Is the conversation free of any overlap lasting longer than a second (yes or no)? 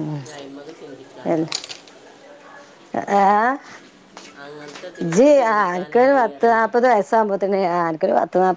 no